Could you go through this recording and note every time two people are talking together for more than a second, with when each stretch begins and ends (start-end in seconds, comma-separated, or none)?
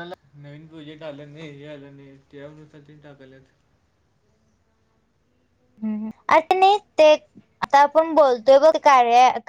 none